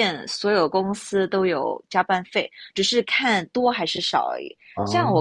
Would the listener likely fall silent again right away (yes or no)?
yes